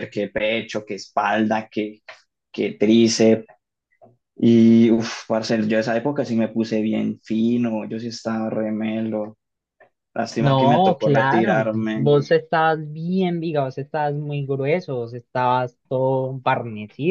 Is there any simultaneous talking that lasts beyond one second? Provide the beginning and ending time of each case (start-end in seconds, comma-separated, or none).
10.4-12.1